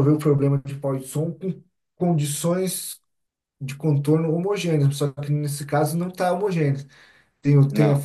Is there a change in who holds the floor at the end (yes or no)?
no